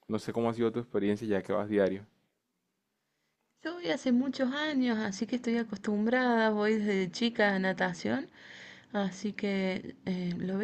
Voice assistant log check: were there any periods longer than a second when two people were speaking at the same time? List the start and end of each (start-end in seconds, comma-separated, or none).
none